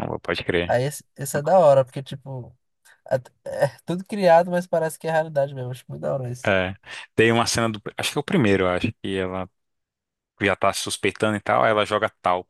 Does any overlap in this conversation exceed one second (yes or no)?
no